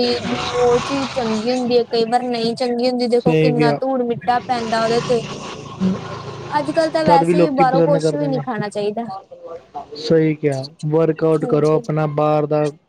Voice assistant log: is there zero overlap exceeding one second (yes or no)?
no